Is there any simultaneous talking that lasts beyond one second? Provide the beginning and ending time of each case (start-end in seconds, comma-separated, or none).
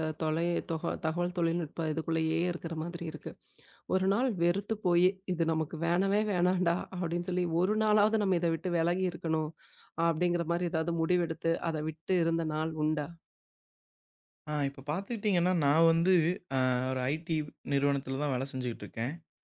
none